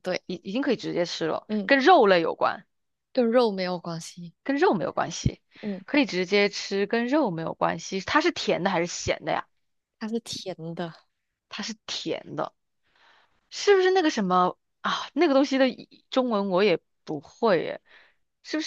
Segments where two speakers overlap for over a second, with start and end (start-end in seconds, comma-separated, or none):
none